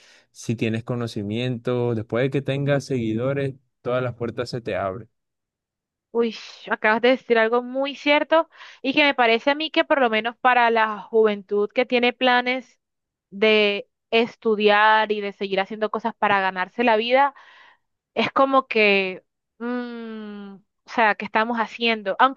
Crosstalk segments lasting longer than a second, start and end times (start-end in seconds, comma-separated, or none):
none